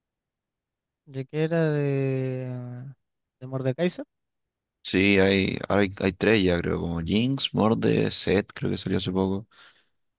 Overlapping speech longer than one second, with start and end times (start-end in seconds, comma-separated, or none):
none